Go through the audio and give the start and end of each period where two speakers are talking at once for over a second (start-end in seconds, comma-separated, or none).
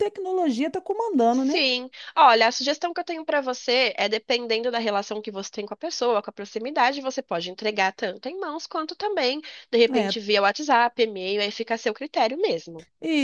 none